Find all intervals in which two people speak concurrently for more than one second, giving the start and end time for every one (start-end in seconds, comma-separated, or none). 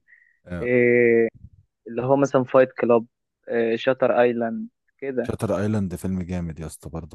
none